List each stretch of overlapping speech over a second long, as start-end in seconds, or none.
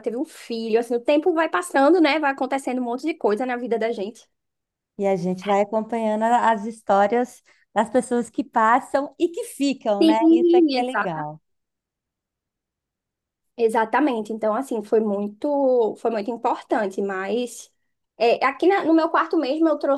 10.0-11.3